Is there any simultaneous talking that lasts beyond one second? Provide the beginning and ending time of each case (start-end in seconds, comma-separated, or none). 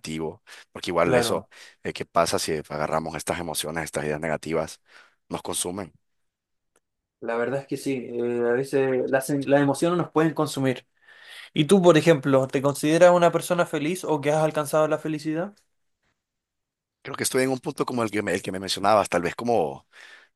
none